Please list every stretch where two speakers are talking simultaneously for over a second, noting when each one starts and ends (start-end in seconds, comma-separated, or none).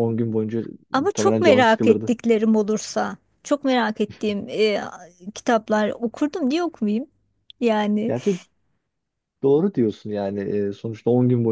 0.9-2.1